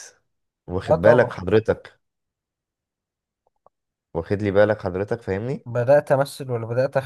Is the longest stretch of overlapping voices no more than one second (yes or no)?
yes